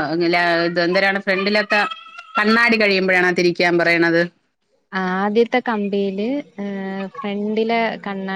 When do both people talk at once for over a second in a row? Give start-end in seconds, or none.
none